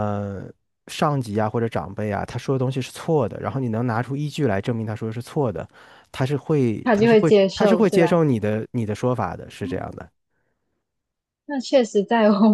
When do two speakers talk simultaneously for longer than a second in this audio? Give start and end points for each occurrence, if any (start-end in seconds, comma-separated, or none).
6.8-8.2